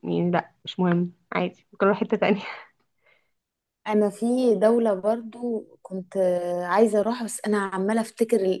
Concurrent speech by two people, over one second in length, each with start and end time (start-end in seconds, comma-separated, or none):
none